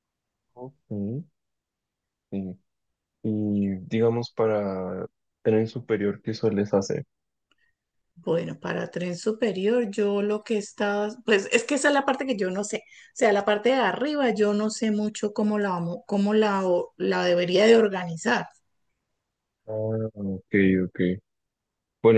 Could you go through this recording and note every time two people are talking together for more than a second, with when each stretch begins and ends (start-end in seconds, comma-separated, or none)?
none